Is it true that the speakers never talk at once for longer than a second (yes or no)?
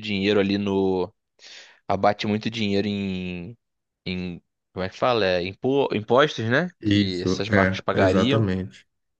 no